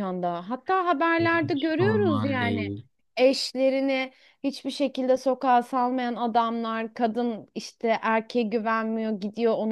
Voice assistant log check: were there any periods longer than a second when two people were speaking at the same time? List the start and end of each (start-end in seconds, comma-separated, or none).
1.2-2.6